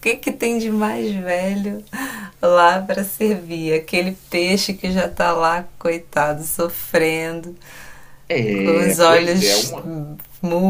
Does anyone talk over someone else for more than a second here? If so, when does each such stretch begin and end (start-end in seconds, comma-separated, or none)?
8.5-9.8